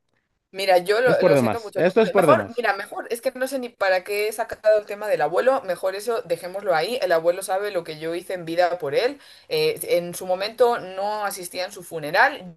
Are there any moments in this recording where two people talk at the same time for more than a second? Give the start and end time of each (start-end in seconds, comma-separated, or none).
1.0-2.7